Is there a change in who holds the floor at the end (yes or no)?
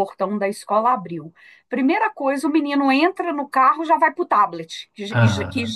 no